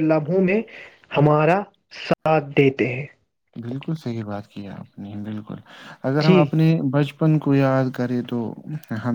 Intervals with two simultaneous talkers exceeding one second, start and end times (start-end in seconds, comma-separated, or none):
none